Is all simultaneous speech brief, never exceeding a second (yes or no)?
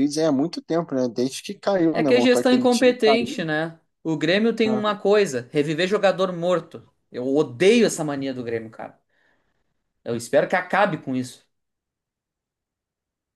no